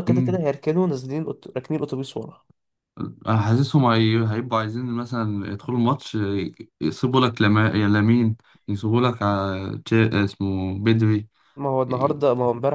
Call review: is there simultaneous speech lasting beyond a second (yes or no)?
no